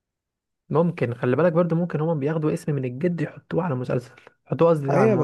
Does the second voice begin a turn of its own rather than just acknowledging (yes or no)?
yes